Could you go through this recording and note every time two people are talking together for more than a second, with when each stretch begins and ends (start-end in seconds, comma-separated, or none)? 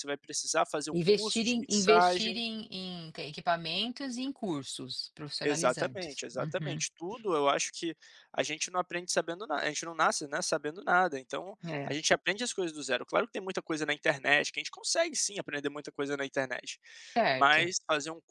0.9-2.4, 5.4-6.8